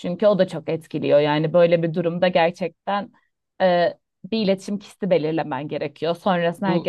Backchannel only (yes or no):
yes